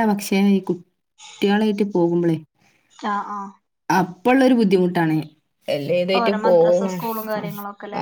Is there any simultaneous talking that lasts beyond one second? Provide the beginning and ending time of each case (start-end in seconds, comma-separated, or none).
6.2-7.5